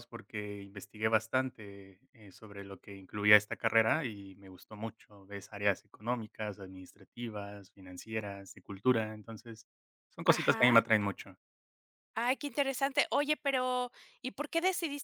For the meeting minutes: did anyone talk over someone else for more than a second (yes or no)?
no